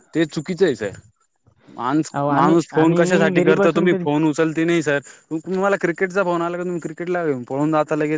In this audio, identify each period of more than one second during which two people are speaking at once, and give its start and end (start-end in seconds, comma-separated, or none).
2.1-4.1